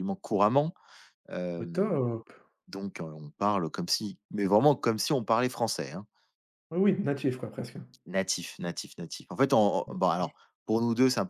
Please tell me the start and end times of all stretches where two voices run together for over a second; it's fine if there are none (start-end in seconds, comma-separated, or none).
none